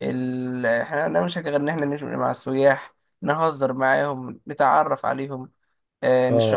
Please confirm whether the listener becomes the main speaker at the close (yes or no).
no